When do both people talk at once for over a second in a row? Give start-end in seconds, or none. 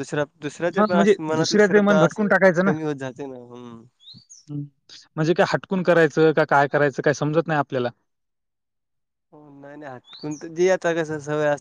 0.8-2.2